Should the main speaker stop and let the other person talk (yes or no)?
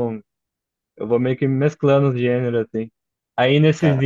no